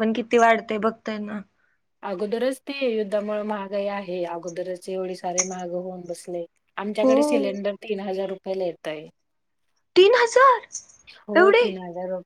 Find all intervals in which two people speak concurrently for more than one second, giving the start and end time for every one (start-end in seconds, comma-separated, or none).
none